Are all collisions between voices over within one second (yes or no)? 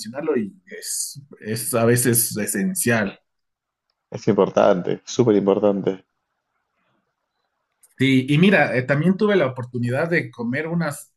yes